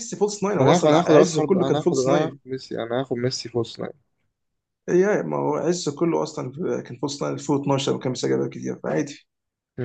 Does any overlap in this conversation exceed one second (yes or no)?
yes